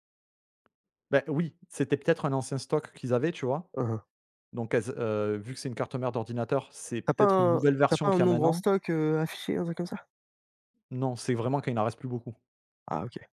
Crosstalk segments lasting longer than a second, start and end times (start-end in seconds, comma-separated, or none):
7.0-8.6